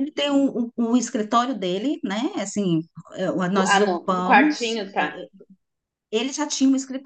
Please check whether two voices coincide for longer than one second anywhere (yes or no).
yes